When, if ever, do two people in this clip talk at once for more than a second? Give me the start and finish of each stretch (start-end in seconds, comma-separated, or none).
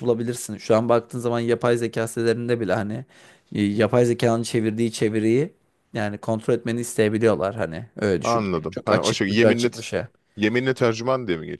8.2-9.7